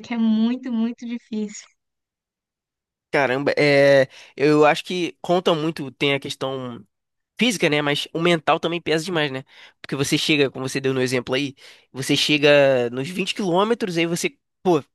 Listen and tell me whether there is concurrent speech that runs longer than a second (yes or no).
no